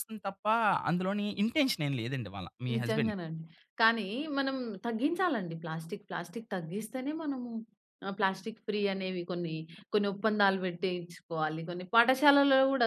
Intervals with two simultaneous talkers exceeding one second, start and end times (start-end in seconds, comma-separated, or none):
none